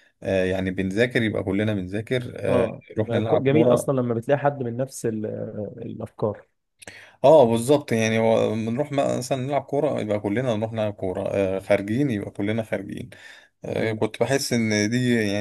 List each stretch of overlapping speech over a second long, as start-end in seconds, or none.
2.5-3.9